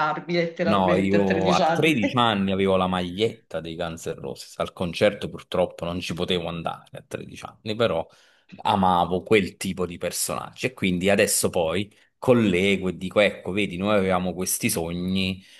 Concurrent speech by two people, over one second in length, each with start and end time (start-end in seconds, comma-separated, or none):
0.6-2.0